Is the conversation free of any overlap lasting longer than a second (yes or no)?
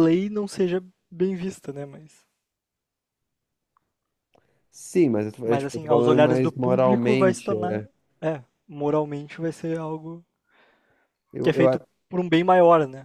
no